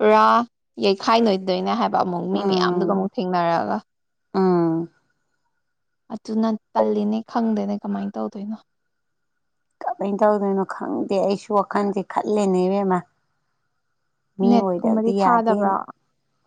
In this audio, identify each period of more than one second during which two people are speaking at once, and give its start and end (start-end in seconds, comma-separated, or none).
14.5-15.8